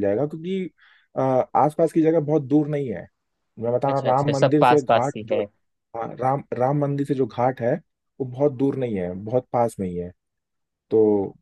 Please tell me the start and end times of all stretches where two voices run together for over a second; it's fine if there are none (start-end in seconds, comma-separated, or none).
3.9-5.4